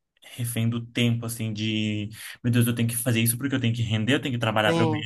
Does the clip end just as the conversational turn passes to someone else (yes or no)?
no